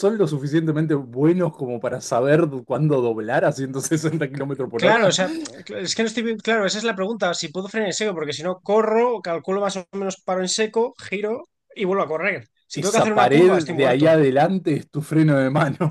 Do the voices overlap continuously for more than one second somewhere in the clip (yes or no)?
yes